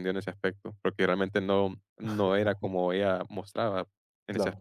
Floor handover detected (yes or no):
yes